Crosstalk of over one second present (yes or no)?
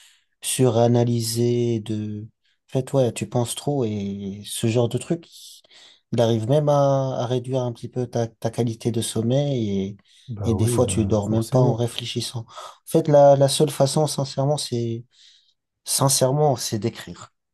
yes